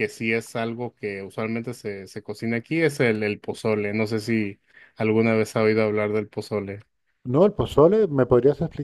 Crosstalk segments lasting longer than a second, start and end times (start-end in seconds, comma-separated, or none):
none